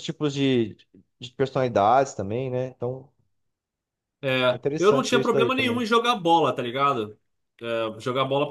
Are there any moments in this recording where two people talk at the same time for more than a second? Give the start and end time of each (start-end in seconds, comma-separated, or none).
4.5-5.8